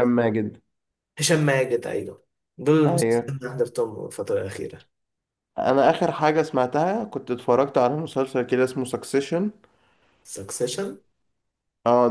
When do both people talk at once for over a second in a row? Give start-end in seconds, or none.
none